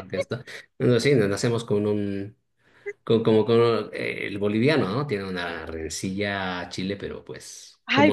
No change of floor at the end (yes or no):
no